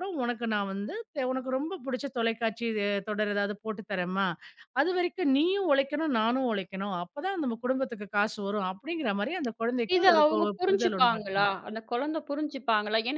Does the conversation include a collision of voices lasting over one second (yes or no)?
yes